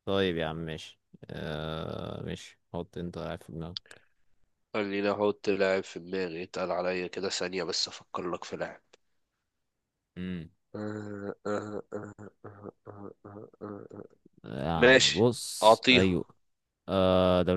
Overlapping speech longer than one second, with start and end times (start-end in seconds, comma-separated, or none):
14.7-16.2